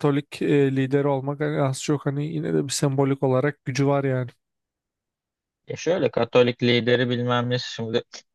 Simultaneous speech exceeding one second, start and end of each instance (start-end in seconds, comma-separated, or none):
none